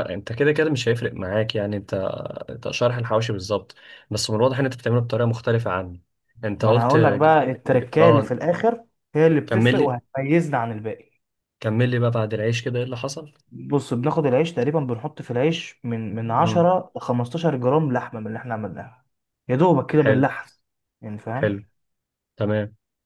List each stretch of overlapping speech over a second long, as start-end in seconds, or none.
6.6-8.3